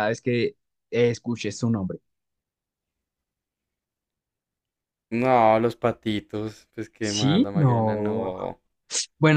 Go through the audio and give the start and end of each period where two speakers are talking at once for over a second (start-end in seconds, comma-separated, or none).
7.0-8.3